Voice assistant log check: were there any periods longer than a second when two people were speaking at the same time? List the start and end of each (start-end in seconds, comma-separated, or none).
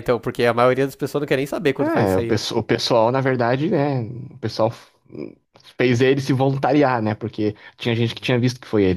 none